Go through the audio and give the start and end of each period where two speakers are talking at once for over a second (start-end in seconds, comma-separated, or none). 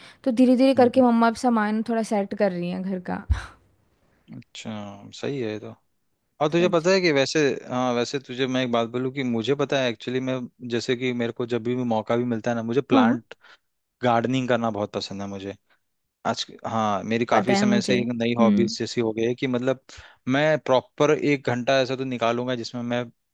17.3-18.8